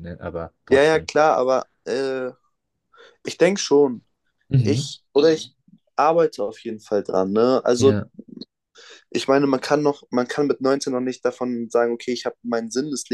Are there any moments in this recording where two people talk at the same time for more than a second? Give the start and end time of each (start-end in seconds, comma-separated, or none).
none